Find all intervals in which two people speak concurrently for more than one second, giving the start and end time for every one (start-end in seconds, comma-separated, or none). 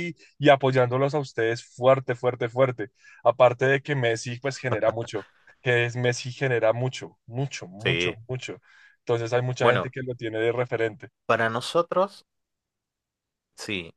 none